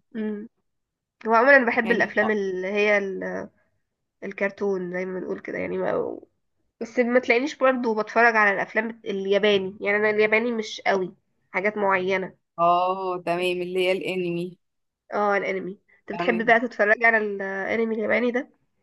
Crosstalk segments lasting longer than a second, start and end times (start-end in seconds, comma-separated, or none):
none